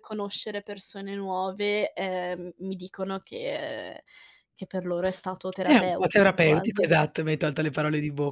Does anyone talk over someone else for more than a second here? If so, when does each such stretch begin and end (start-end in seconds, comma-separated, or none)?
5.6-6.9